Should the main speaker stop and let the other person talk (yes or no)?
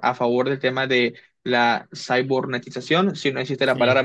no